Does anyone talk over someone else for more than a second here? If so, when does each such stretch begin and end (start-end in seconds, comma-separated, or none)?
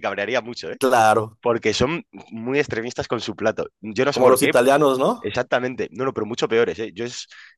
none